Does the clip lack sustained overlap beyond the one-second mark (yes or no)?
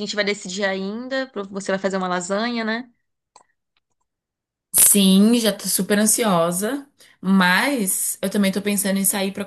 yes